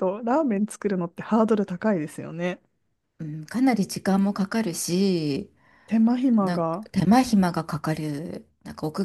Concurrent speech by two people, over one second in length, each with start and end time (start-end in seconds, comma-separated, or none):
none